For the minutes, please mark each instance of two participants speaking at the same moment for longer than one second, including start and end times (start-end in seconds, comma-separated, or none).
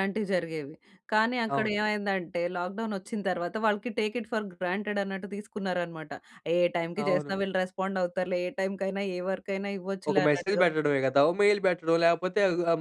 none